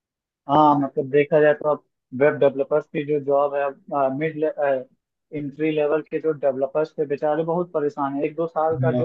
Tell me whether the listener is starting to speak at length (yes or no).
no